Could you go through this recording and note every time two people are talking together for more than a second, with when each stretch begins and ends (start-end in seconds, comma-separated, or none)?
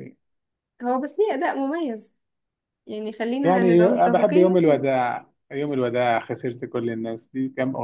3.4-4.8